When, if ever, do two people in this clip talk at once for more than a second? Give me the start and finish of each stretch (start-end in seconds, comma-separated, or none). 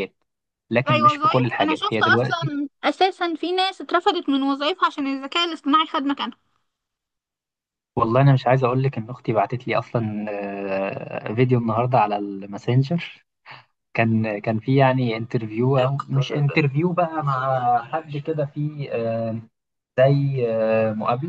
0.9-2.5